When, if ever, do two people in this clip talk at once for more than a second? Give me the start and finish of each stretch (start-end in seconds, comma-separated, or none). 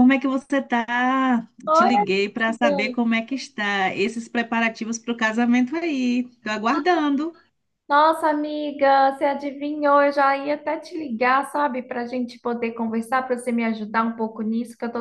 1.7-3.0